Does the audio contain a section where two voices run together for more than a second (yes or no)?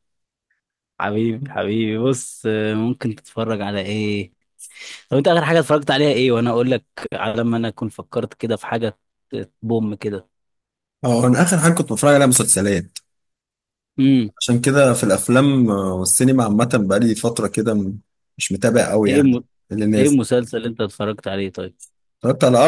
no